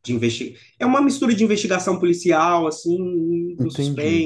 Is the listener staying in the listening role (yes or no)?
no